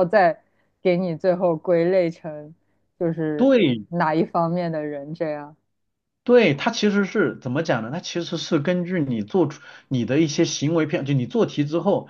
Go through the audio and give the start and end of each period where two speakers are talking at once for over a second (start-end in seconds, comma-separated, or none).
none